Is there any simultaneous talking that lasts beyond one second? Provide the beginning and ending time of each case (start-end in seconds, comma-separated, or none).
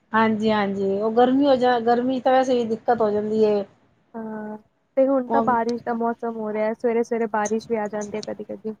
none